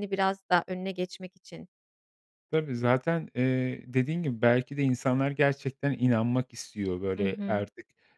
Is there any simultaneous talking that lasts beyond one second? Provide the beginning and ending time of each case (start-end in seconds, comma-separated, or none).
none